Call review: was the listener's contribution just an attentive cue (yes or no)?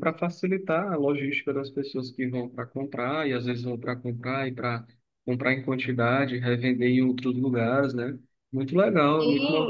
no